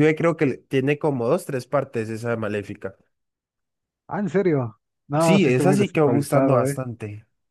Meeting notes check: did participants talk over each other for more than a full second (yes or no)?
yes